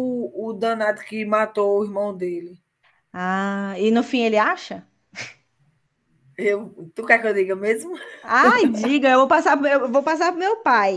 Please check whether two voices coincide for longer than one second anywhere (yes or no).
no